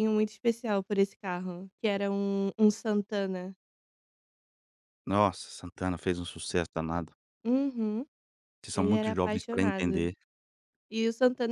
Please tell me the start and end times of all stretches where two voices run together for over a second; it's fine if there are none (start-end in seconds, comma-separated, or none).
8.7-10.1